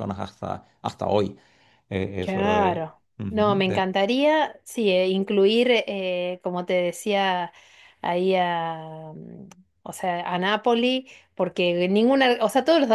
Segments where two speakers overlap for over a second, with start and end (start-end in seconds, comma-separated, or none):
2.2-3.9